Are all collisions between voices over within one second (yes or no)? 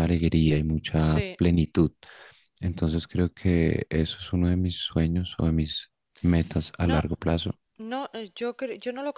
yes